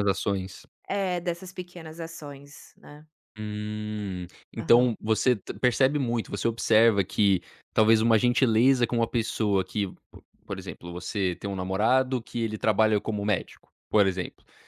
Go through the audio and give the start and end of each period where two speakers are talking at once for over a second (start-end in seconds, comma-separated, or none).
none